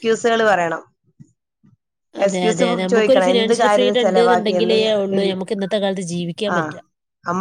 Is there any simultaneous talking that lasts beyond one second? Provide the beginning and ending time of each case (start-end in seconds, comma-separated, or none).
2.3-4.8